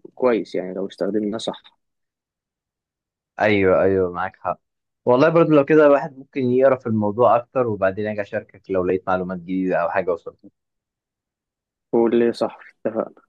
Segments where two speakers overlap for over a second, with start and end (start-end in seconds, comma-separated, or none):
none